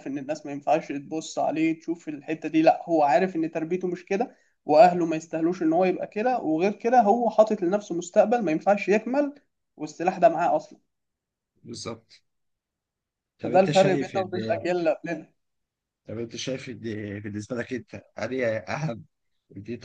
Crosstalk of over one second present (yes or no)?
yes